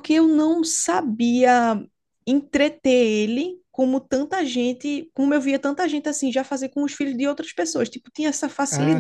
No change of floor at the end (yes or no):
no